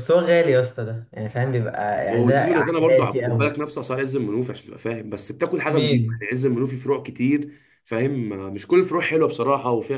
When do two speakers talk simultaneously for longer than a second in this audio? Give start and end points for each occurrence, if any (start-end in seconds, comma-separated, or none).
2.1-3.6